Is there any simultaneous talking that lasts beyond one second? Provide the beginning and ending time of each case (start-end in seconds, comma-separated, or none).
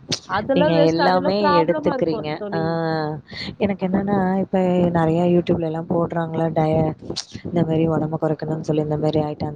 0.6-2.6